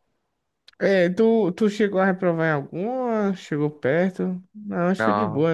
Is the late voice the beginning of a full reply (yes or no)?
yes